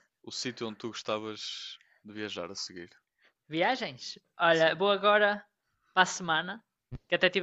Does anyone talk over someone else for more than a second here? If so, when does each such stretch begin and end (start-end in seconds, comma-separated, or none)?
none